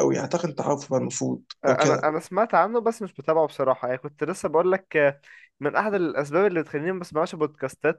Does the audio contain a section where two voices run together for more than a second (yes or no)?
no